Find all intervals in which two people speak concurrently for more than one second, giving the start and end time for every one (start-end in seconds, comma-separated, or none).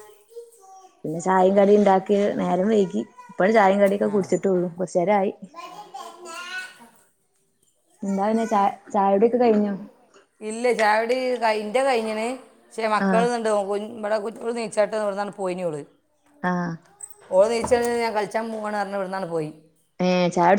none